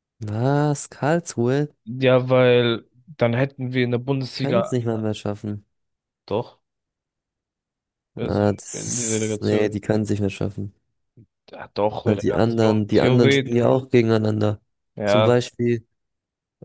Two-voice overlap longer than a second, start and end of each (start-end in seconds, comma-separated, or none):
8.2-9.8, 12.0-13.5